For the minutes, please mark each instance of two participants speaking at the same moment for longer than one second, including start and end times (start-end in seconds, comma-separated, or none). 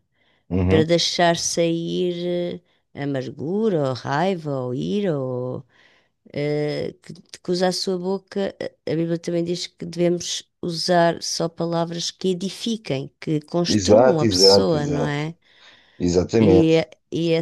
13.7-15.3